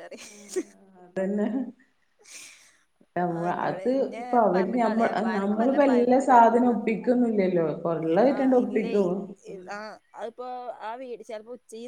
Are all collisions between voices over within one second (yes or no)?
no